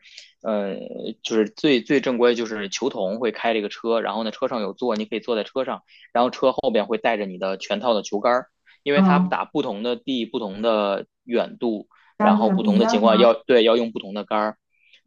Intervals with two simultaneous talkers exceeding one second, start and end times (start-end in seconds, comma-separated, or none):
12.2-13.4